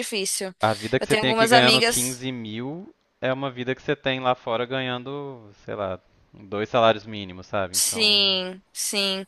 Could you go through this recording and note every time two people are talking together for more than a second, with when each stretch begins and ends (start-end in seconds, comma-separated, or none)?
1.0-2.3